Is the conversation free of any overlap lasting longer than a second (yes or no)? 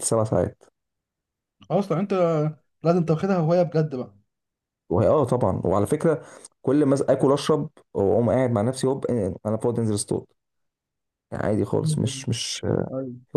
yes